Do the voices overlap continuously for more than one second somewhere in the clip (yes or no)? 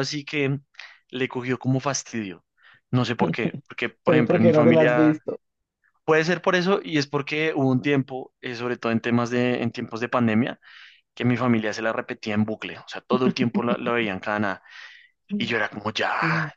yes